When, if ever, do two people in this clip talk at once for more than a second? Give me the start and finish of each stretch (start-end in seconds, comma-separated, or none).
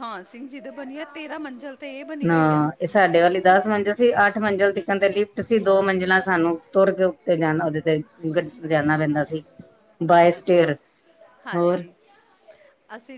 none